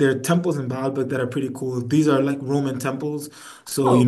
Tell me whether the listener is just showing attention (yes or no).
yes